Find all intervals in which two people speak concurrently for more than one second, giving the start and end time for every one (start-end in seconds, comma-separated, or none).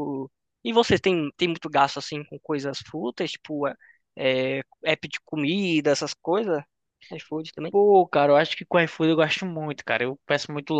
none